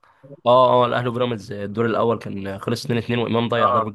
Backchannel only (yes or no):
no